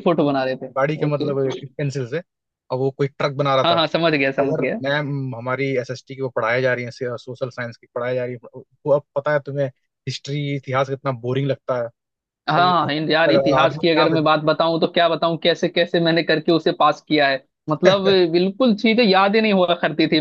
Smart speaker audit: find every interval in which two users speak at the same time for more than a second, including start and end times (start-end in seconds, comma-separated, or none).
12.6-14.2